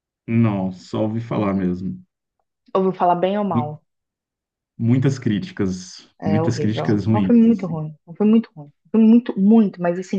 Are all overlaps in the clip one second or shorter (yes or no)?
no